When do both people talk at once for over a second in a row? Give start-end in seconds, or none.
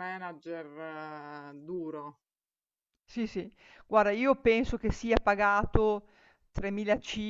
none